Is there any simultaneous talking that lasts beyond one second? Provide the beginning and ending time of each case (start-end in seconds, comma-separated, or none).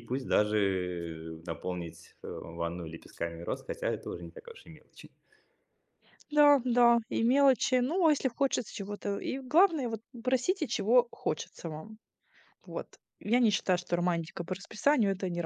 none